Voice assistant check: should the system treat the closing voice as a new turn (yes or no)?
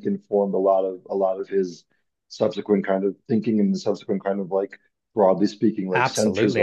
yes